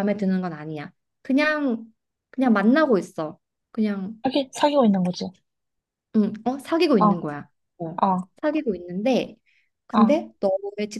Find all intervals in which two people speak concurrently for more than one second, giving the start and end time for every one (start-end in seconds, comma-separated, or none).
none